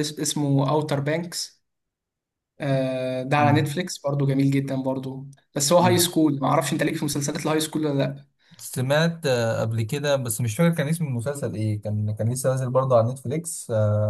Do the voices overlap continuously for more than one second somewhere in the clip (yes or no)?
no